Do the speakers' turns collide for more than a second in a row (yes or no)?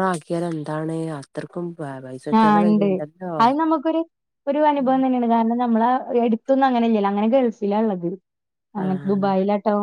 no